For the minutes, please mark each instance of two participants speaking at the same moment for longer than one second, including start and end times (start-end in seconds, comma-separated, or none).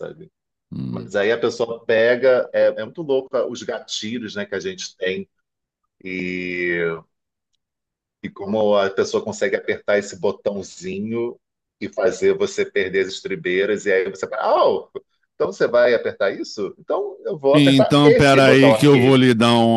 17.5-19.2